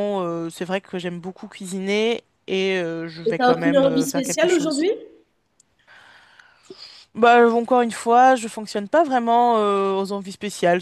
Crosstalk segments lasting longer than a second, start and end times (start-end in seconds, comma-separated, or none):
3.2-4.8